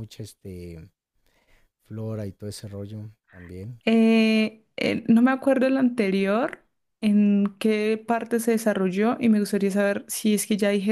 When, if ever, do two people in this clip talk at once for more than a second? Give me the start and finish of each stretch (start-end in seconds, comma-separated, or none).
none